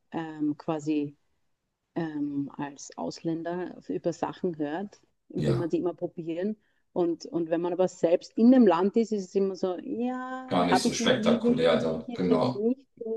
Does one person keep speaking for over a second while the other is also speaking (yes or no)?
yes